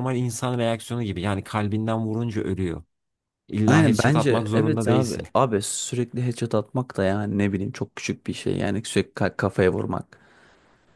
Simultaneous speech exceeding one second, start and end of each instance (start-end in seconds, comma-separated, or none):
3.7-5.3